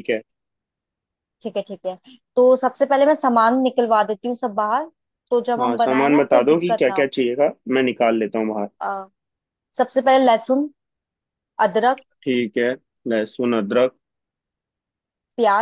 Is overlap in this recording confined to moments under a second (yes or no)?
no